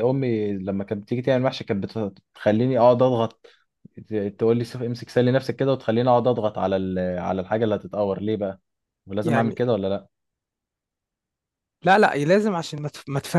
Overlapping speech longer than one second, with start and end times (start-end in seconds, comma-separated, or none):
none